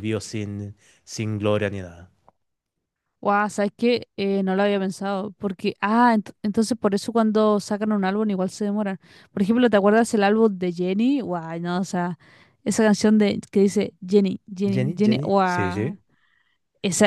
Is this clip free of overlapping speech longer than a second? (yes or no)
no